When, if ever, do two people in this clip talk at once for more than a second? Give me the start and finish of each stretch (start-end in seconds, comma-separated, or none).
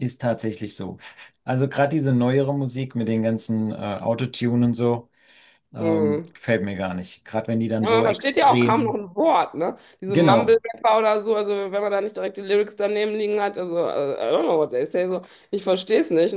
7.8-9.0